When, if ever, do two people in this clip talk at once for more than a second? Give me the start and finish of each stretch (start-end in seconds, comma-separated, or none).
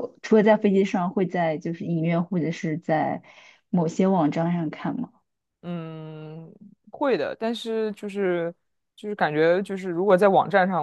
none